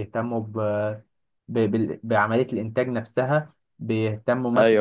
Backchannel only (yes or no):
yes